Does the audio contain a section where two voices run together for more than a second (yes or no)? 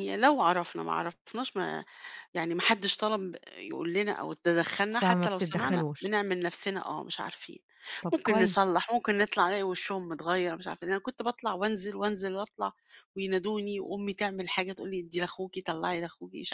yes